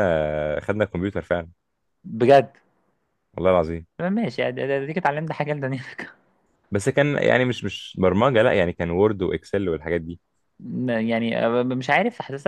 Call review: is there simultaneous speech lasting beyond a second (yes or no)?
no